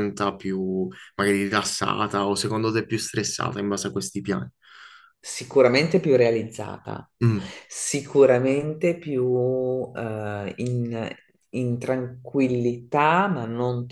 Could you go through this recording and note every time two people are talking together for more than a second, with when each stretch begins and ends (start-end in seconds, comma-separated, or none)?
none